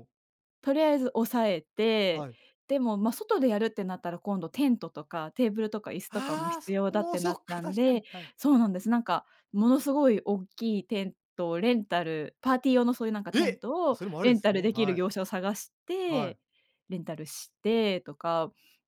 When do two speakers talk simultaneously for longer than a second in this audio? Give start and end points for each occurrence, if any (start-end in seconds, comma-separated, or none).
6.1-8.3, 13.3-15.0